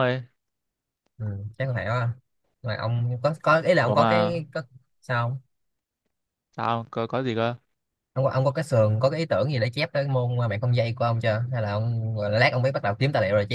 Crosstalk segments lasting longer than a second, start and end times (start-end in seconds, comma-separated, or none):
none